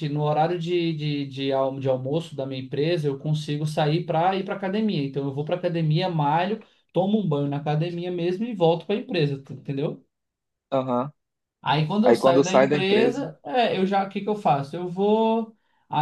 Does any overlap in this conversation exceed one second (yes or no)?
yes